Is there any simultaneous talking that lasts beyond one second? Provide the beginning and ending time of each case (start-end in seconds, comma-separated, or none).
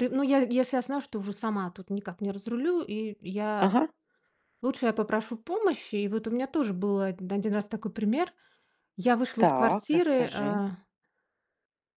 9.4-10.6